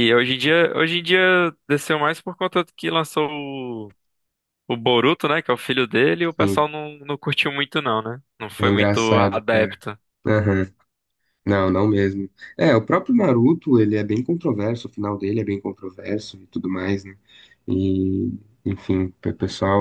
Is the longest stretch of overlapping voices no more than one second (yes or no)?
no